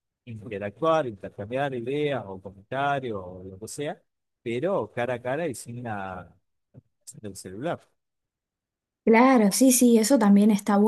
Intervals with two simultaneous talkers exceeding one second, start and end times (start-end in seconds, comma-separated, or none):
none